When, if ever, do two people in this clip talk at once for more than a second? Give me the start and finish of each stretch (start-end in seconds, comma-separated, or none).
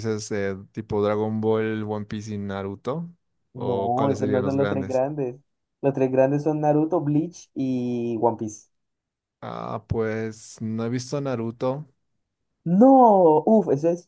3.5-5.0